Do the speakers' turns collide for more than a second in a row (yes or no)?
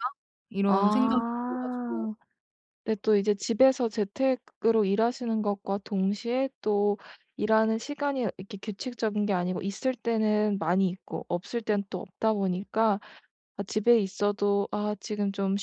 yes